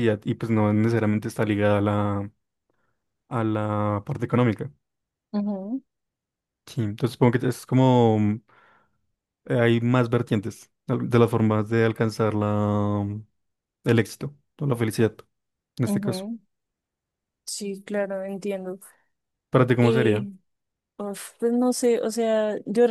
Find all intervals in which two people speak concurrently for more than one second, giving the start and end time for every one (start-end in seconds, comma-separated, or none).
none